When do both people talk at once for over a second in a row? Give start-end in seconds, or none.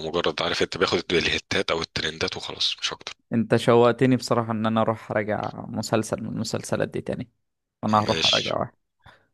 none